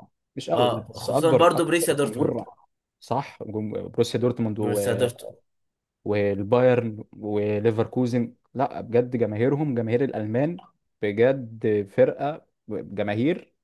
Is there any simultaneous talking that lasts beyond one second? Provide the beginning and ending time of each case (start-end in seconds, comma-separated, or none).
0.5-2.4